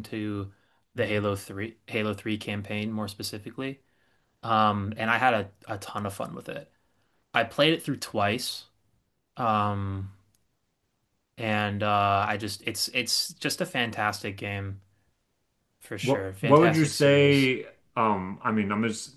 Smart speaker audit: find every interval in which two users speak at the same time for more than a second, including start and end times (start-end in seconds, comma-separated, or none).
16.0-17.5